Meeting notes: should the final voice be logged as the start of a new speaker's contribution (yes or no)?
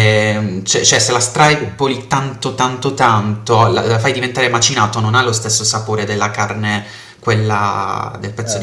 yes